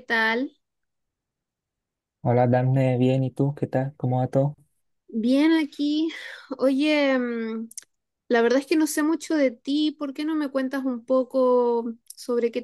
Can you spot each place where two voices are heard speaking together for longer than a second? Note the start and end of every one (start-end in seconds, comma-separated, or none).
none